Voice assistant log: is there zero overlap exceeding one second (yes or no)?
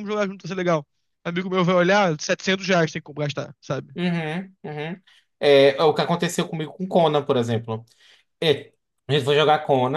yes